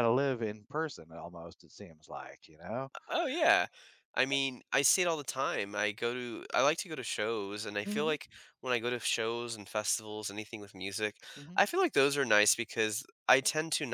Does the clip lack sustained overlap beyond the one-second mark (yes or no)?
yes